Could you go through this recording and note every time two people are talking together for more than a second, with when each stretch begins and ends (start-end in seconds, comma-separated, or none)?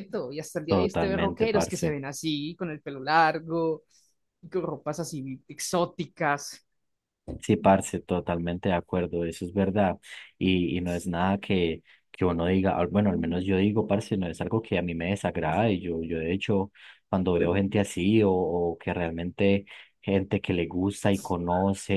0.7-1.9